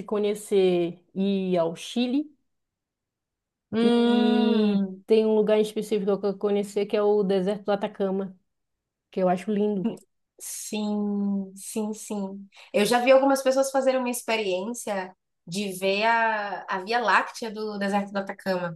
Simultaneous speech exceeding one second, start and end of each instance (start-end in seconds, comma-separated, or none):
3.8-5.0